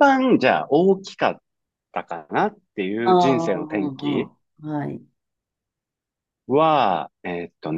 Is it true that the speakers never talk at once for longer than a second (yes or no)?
no